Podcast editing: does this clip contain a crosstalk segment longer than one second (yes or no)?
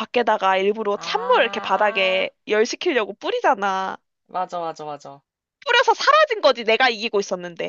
yes